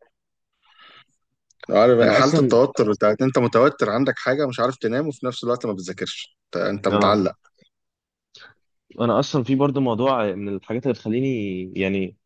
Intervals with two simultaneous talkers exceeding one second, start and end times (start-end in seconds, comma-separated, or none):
none